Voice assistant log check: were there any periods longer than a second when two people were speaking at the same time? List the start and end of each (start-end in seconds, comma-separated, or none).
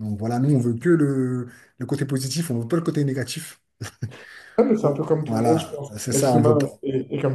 4.8-6.7